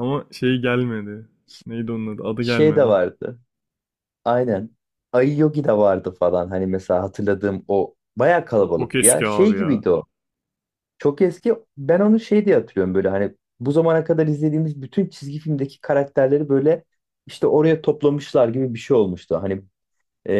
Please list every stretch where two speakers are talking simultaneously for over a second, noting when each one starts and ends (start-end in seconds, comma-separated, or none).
8.6-9.8